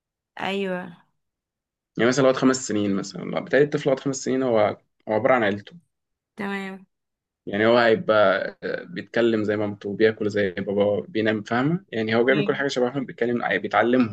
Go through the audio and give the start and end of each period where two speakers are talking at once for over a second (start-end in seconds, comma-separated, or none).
none